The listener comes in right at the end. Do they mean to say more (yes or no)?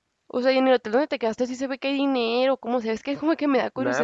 yes